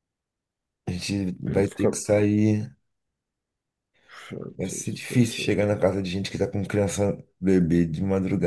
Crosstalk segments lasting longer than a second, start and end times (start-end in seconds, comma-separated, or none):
4.6-6.0